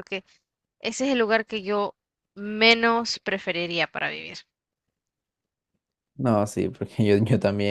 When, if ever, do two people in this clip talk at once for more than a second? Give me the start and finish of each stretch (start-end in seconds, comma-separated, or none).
none